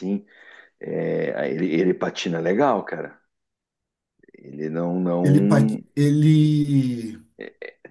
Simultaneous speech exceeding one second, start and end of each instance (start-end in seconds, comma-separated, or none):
none